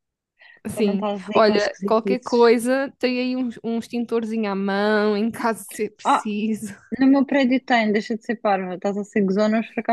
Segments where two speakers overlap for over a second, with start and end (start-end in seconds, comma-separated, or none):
0.7-2.5